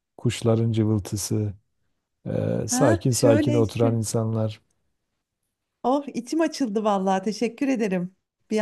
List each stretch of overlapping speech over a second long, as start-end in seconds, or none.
2.7-4.0